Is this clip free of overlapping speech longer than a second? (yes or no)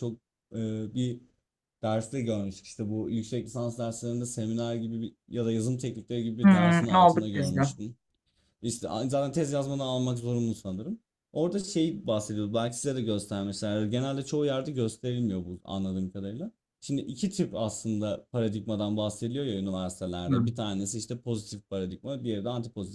no